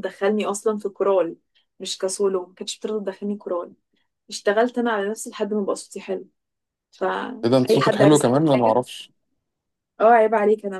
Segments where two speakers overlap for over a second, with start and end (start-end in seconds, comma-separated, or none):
7.4-8.8